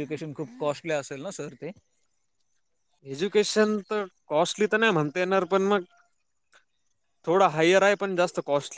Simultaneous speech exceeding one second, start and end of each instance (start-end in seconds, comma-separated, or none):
none